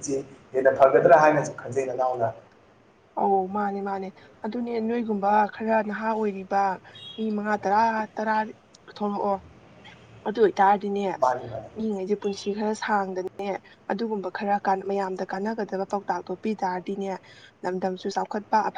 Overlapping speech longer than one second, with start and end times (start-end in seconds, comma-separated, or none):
none